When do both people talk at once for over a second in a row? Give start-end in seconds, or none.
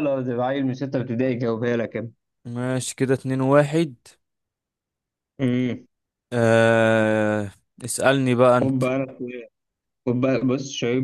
none